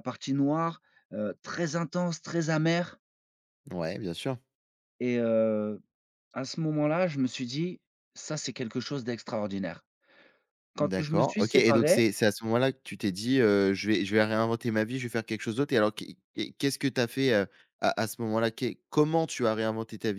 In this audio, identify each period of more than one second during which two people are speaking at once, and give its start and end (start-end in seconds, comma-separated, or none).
10.8-12.0